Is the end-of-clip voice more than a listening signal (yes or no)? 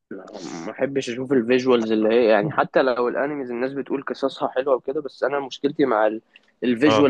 no